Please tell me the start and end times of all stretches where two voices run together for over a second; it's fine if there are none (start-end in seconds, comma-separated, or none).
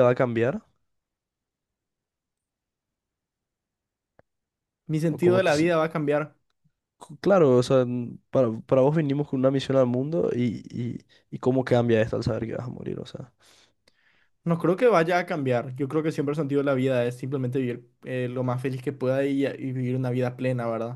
none